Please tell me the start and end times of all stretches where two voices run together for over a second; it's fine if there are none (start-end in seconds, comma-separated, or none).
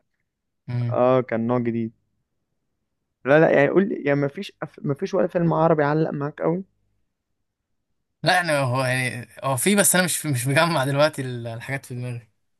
none